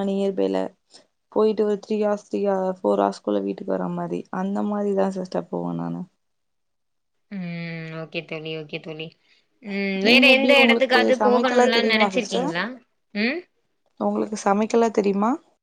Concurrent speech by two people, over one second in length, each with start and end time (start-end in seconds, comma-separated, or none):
10.1-12.1